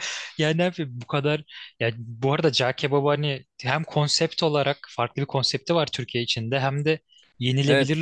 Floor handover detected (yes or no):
no